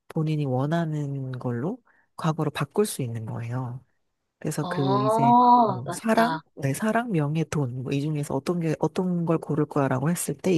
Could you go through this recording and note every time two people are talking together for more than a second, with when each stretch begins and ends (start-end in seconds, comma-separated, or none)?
4.6-6.4